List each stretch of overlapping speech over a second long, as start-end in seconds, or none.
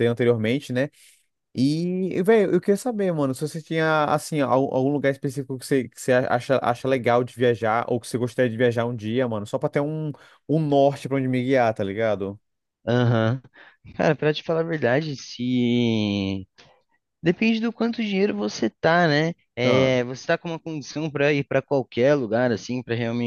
none